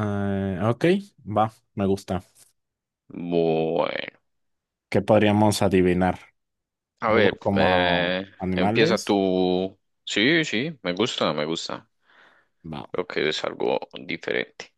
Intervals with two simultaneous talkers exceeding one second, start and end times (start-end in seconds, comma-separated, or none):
7.0-9.2